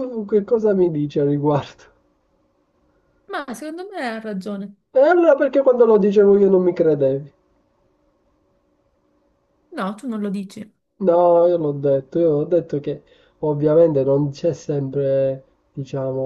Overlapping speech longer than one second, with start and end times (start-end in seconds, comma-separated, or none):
none